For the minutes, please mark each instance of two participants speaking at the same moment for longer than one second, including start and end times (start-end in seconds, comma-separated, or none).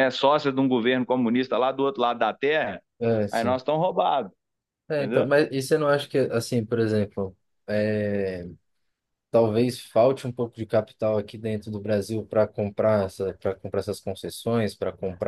none